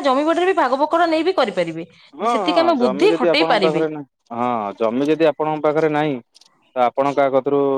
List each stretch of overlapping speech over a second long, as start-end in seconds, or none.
2.2-3.8